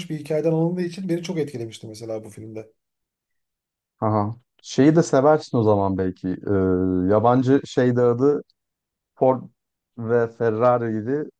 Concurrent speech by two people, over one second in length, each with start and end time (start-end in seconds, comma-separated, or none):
none